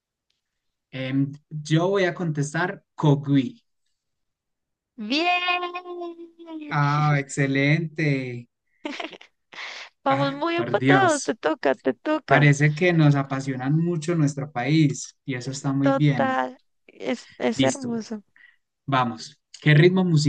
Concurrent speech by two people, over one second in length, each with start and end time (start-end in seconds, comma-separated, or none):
10.1-11.4